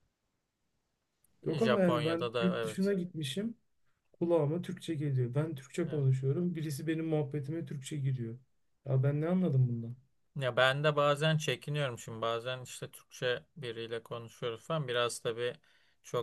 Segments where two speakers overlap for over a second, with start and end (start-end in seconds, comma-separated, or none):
1.5-2.9